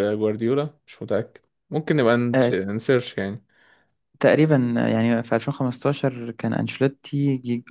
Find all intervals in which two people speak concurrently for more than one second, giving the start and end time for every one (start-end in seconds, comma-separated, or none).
none